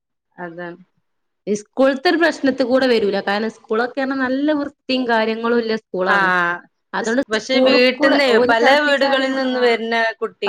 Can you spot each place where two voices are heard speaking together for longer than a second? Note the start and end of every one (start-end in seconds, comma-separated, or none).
7.3-9.8